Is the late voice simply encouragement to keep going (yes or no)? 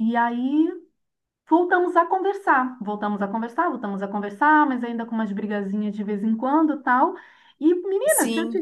yes